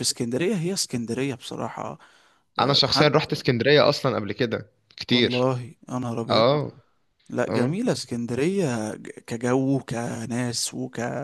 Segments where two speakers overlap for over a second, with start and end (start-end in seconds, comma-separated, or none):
none